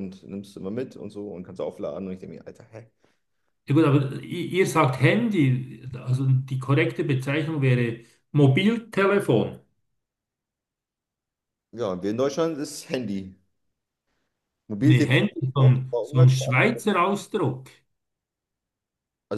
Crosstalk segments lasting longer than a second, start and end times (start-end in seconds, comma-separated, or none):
14.8-16.7